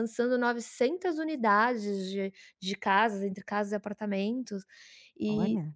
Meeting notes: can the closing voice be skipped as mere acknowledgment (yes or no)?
yes